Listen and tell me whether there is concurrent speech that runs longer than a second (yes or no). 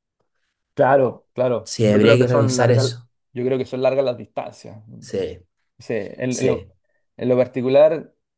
yes